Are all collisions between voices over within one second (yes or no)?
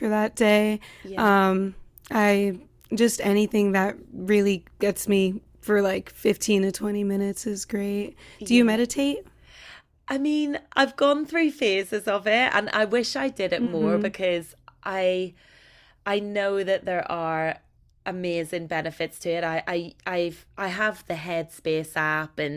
yes